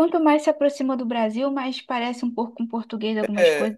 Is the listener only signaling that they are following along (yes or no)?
no